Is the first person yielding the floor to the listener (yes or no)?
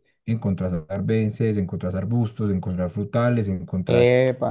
no